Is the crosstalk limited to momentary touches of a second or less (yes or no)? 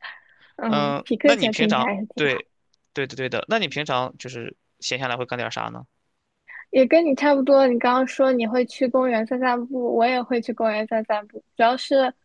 no